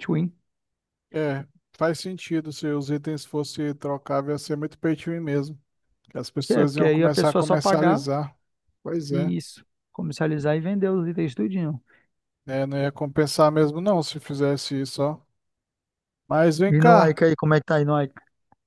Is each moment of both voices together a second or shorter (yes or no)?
no